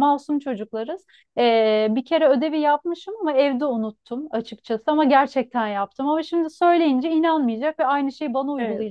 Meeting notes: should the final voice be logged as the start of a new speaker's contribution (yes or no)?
no